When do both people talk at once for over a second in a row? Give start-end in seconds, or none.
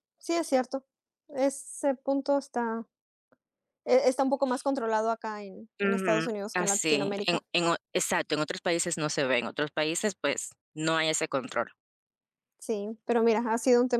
5.8-7.4